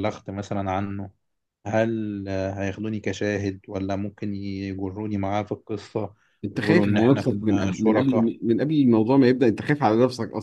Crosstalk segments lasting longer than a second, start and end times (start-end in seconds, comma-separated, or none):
6.5-8.3